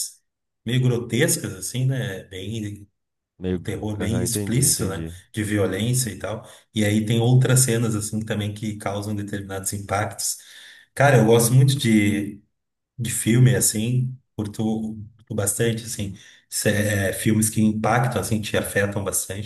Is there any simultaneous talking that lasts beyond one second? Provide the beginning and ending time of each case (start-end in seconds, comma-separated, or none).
3.5-5.1